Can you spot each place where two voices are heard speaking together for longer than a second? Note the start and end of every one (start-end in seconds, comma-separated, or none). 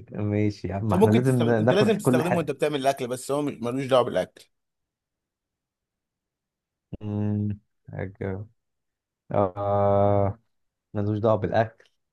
0.9-2.5